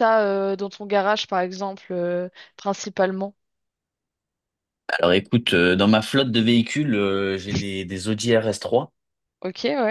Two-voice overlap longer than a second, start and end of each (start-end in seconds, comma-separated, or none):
none